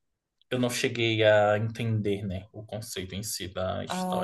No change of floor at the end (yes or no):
no